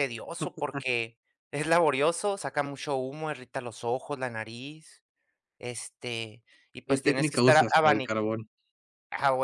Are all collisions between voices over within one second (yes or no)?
no